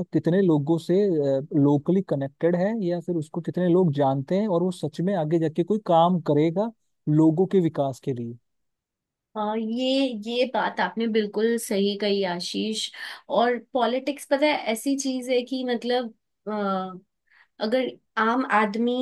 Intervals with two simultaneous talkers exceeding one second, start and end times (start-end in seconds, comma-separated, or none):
none